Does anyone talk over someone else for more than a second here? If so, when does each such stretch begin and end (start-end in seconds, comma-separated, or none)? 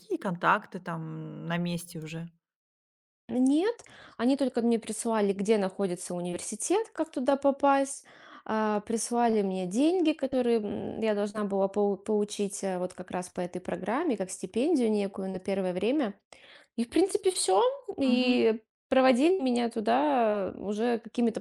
none